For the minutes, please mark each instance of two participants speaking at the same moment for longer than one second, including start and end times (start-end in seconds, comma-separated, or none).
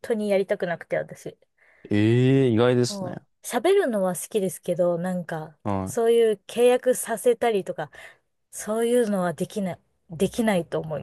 none